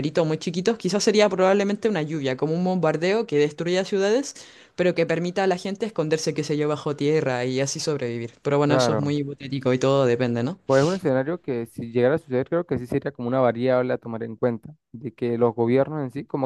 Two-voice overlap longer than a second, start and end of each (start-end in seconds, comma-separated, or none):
none